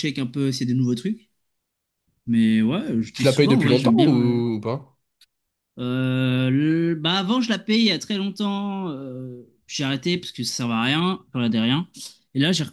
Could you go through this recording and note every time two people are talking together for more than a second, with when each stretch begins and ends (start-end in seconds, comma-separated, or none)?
3.1-4.4